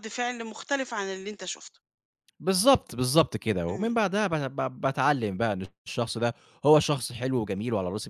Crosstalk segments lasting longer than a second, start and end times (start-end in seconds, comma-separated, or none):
none